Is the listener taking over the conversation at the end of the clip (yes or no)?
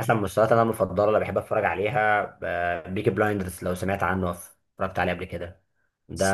no